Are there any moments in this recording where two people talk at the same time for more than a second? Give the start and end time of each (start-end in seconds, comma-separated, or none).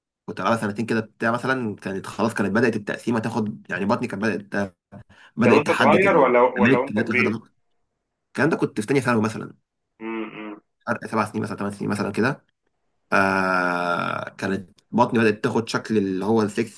5.5-7.4